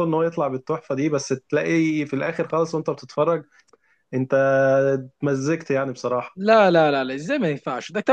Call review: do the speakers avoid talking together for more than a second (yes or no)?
yes